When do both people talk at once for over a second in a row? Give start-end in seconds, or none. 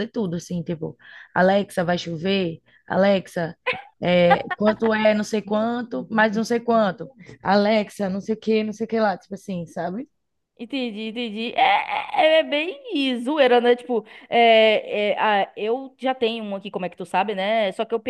none